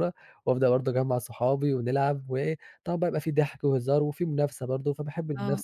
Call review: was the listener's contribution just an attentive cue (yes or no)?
no